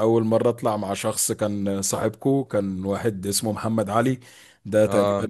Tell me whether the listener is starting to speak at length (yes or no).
no